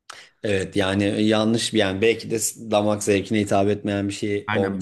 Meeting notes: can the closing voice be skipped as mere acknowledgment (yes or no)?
no